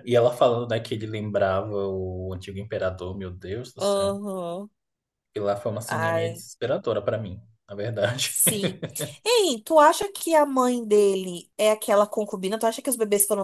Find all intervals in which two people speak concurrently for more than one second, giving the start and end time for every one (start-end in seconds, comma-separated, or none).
none